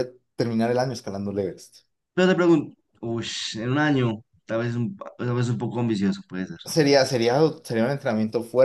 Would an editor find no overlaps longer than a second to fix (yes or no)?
yes